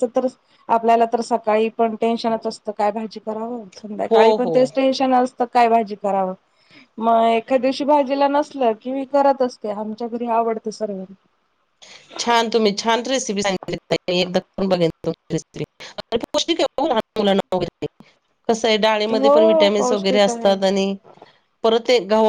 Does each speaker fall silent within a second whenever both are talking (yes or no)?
no